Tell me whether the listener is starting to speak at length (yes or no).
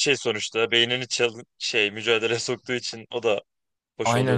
yes